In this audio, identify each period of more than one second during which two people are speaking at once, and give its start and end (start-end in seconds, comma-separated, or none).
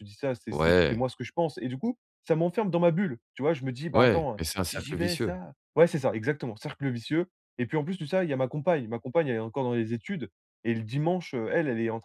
3.9-5.3